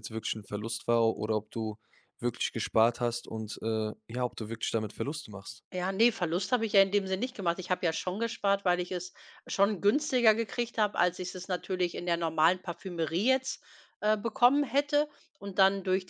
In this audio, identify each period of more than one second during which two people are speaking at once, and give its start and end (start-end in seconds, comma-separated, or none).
none